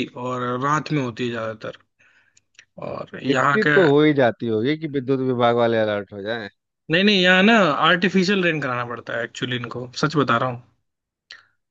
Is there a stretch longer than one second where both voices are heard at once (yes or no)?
no